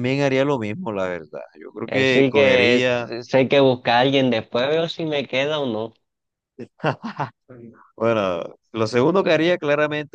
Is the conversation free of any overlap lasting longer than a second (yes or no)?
no